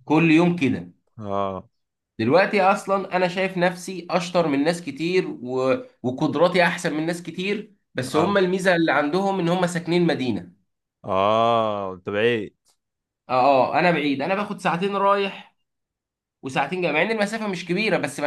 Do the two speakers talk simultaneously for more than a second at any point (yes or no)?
no